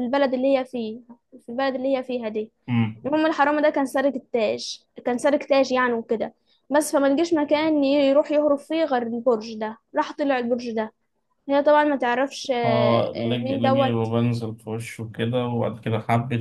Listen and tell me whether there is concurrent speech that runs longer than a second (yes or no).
yes